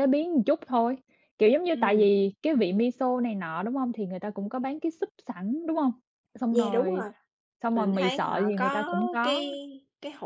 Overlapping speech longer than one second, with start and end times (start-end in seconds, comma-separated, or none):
7.7-9.4